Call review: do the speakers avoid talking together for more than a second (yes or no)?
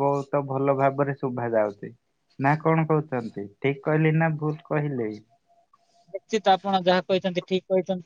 yes